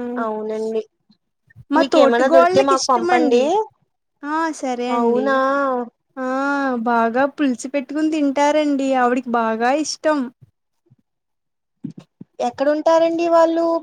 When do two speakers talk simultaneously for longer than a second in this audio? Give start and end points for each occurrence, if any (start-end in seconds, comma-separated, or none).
1.8-3.4